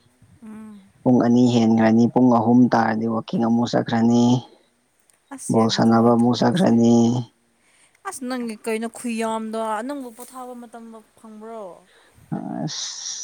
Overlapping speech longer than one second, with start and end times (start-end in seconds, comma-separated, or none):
5.5-6.7